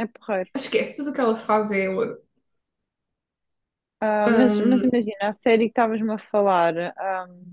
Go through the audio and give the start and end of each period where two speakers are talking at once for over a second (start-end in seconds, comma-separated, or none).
none